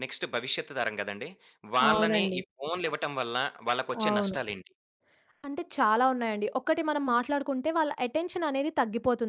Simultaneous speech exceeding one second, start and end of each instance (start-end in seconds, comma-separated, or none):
none